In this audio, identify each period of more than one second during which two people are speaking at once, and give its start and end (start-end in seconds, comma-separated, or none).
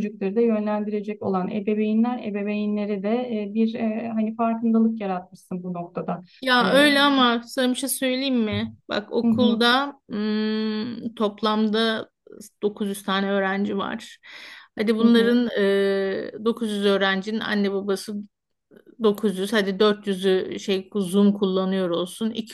none